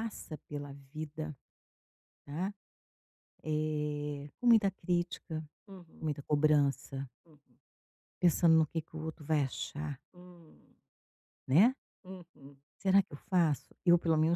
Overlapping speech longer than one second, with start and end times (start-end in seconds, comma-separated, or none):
none